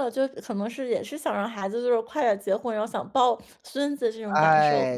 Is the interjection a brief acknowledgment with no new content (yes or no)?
no